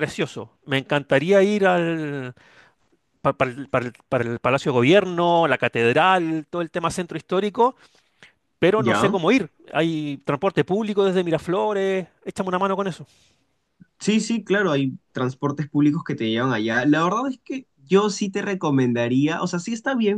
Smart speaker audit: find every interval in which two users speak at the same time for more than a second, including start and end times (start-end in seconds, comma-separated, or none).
none